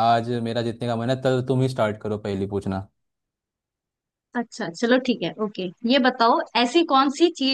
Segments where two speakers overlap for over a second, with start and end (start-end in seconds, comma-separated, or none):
none